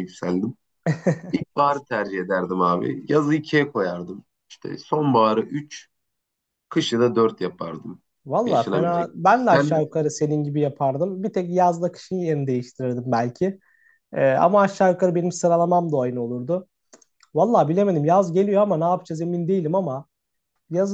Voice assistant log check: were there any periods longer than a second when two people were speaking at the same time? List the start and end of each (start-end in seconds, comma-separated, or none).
8.4-9.8